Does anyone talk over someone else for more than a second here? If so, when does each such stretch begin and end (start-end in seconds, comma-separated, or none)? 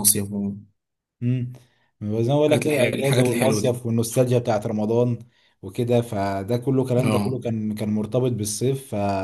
2.5-3.8